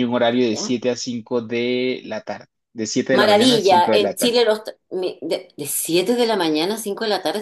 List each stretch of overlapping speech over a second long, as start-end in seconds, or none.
3.1-4.4